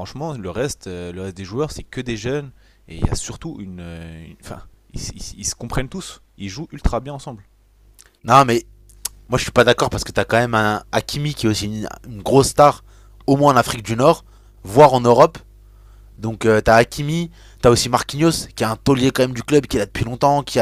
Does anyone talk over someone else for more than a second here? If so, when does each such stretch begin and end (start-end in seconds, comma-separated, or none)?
none